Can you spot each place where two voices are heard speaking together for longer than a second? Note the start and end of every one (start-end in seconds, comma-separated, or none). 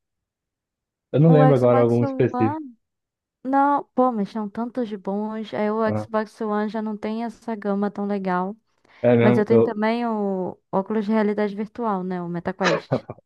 1.3-2.6